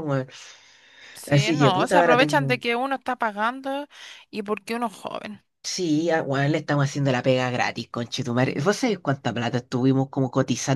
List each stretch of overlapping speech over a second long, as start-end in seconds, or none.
1.3-2.7